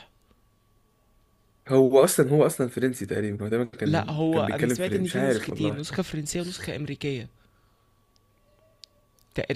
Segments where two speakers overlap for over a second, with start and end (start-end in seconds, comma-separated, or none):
3.8-5.8